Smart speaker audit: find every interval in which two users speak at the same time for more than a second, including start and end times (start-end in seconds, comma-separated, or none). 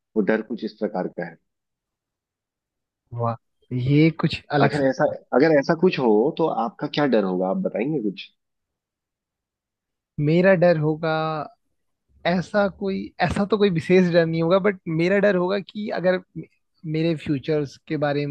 none